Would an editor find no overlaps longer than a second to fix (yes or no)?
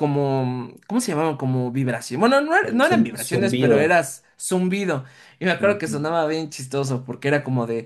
no